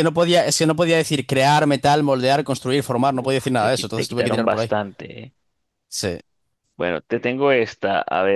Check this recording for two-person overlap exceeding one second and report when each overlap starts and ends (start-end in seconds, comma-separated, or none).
3.3-4.7